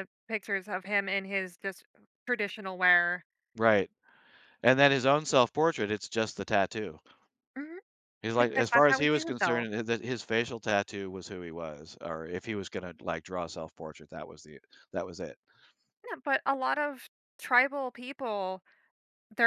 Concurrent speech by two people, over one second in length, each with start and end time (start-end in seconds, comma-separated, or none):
8.3-9.7